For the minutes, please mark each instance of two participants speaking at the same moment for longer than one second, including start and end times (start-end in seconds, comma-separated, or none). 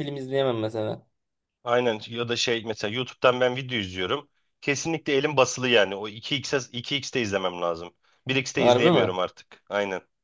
none